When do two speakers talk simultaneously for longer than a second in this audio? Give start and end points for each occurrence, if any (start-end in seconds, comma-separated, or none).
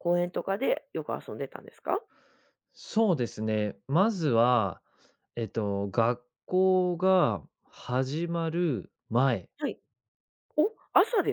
none